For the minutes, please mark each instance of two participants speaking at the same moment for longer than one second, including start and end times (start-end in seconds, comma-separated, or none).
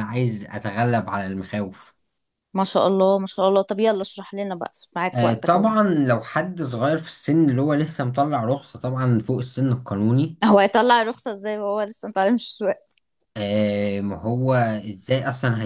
none